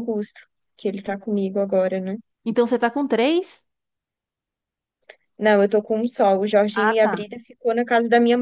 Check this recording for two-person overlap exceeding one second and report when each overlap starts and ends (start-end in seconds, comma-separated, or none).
none